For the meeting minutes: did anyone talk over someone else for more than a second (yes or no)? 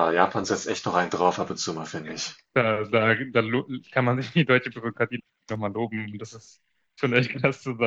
no